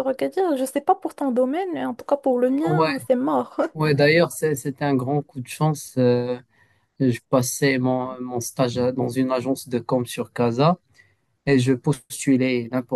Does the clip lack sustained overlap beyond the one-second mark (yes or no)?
yes